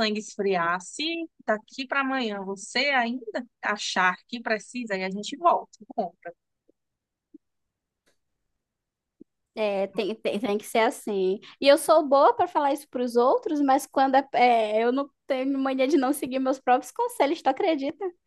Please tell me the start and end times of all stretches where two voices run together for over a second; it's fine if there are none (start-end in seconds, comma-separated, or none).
none